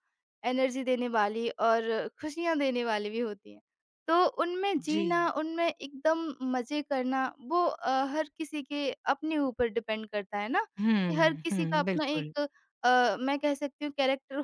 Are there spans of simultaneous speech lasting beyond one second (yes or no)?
yes